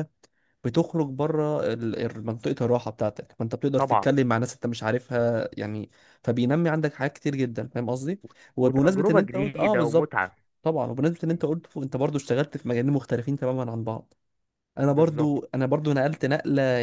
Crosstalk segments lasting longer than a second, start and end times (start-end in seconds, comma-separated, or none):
8.6-10.4